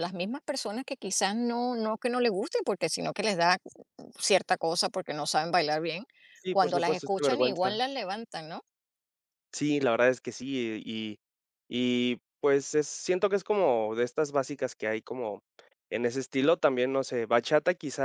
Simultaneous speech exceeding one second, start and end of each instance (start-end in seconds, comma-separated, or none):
6.5-7.8